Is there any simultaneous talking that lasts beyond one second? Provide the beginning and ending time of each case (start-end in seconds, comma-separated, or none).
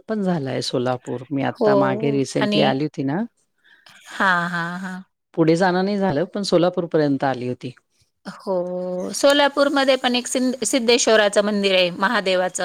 none